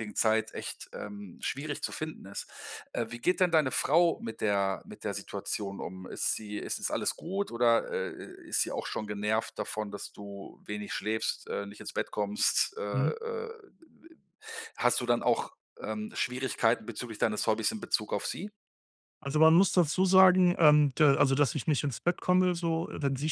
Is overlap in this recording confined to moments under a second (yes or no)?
yes